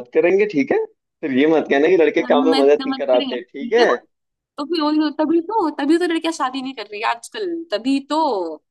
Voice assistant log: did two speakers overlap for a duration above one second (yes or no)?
yes